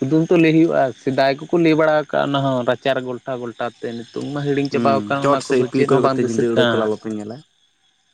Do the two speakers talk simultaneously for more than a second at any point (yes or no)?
yes